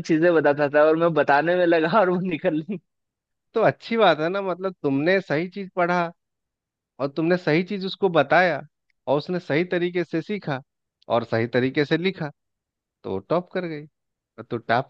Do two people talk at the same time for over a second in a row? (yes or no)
no